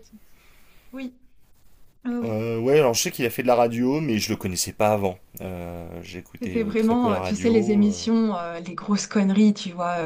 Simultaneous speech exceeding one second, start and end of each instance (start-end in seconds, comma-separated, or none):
6.4-8.1